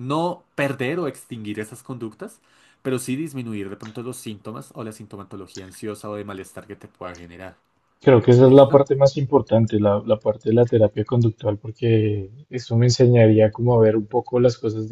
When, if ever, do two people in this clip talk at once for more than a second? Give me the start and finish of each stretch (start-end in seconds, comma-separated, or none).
none